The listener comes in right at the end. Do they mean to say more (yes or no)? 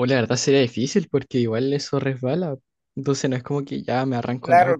yes